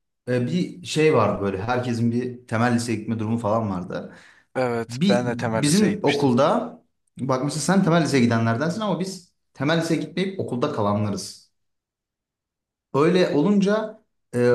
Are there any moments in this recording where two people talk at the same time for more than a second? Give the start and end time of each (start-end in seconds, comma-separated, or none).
4.9-6.3